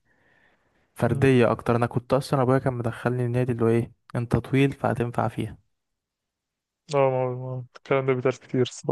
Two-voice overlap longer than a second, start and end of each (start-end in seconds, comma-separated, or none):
none